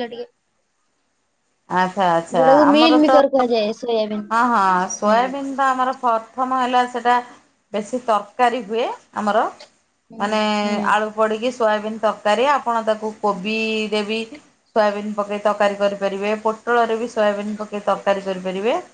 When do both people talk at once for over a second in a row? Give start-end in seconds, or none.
none